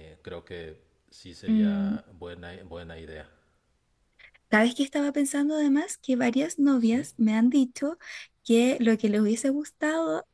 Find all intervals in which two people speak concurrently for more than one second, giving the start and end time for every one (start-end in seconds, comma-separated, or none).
none